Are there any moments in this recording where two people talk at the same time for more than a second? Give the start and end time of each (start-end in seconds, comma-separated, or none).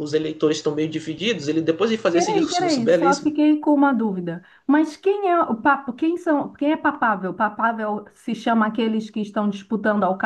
2.1-3.3